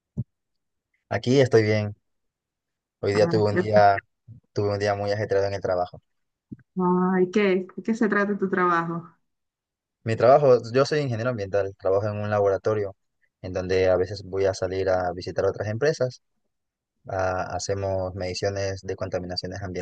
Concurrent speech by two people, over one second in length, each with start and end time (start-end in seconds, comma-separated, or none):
none